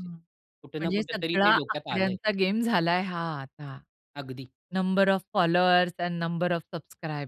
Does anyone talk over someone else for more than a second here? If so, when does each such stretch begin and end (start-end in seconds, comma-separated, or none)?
0.8-2.2